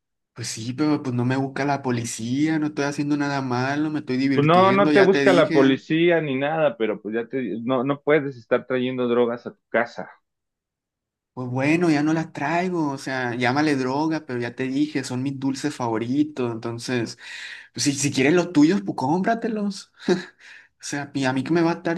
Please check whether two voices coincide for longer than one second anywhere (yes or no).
yes